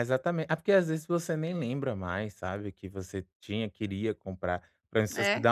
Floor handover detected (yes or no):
no